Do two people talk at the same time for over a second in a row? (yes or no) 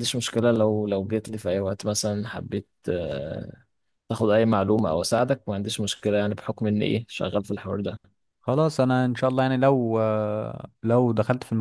no